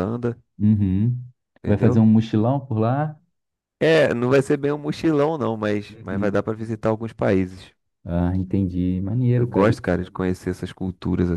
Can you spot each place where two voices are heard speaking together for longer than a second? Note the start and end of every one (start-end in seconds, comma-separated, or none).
none